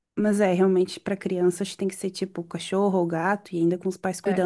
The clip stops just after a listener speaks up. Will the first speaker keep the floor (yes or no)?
yes